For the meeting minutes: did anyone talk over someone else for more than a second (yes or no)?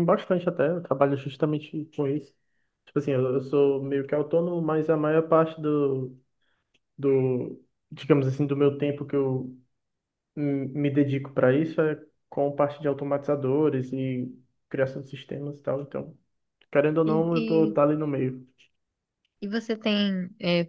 no